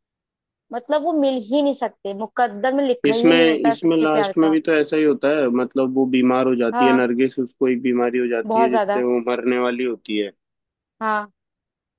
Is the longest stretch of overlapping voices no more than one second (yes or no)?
no